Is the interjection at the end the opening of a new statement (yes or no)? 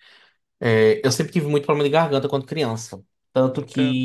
no